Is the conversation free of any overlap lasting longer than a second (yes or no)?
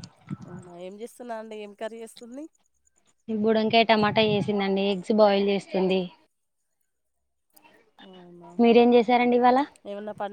yes